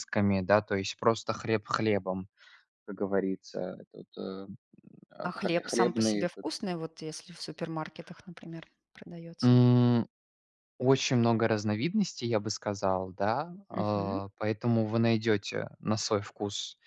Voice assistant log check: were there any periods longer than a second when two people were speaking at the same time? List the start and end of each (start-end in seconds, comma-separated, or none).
5.2-6.5